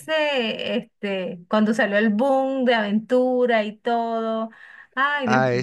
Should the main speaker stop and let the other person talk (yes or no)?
yes